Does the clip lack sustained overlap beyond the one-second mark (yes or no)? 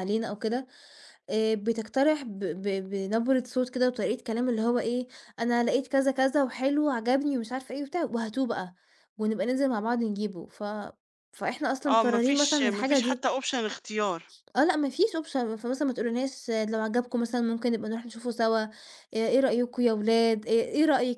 no